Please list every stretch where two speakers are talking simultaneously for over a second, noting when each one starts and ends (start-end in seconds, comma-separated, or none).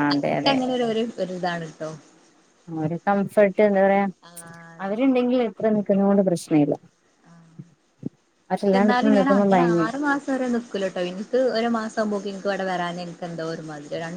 none